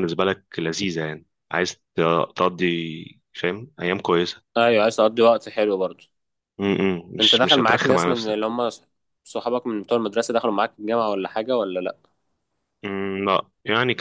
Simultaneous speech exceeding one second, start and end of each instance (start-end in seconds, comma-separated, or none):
7.2-8.5